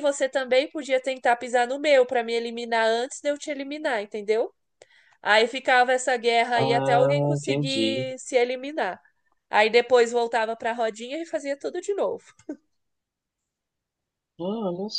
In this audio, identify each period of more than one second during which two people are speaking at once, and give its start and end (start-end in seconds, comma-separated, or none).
6.5-8.1